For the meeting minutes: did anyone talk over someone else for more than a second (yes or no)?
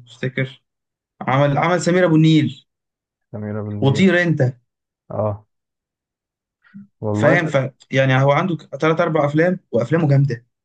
no